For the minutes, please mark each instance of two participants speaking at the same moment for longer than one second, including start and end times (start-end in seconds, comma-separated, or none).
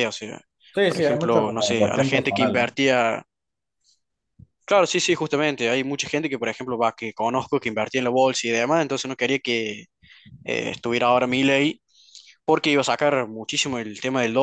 0.8-2.8